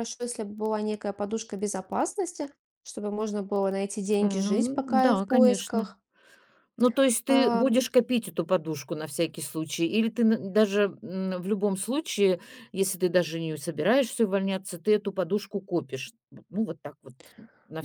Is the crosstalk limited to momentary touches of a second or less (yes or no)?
no